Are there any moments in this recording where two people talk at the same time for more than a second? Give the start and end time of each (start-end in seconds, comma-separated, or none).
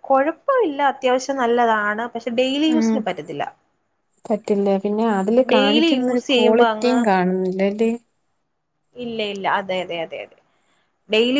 5.5-7.0